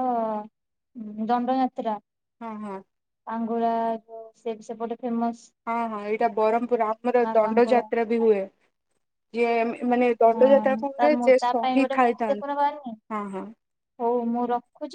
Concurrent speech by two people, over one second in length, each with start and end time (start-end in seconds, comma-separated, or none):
10.3-12.5